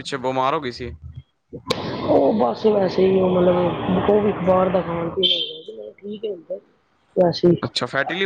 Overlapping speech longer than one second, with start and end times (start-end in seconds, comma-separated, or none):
none